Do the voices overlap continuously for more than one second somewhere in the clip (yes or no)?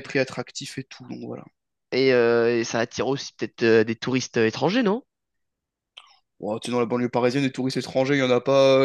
no